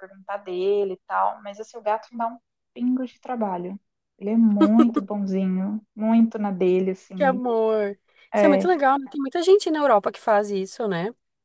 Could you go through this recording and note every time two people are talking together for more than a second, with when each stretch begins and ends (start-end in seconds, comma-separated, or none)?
none